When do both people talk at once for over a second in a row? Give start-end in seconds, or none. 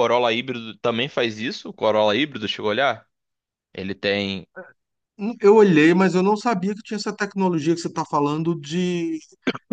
none